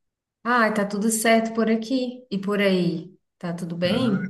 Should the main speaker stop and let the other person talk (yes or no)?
yes